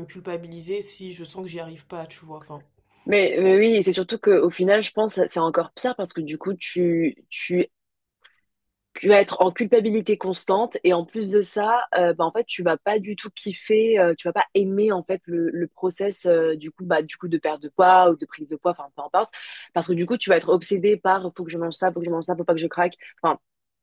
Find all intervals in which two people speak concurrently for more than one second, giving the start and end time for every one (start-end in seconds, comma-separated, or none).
none